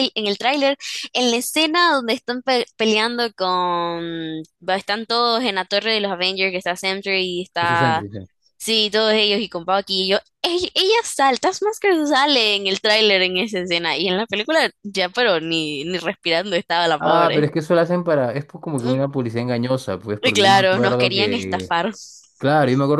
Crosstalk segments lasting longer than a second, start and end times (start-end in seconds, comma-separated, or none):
20.2-21.7